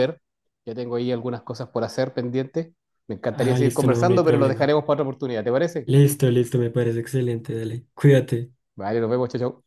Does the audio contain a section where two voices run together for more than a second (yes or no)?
yes